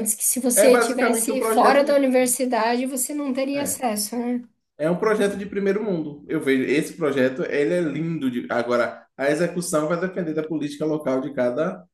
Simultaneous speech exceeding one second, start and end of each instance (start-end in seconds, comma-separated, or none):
0.5-2.0